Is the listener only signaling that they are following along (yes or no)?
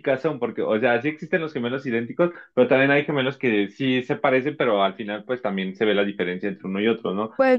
no